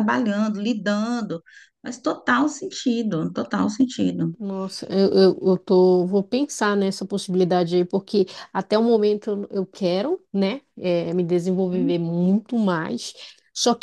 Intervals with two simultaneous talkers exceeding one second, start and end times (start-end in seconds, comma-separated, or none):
none